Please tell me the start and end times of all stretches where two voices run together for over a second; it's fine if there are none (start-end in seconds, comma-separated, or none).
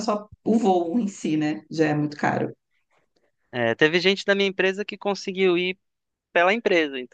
none